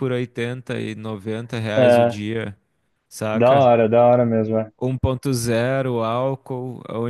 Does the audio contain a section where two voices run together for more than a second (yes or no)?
no